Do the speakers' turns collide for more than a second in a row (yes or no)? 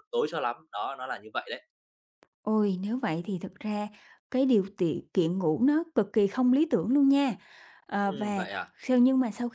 no